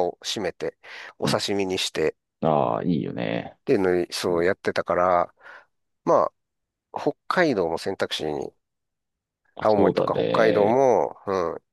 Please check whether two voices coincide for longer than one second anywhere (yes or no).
yes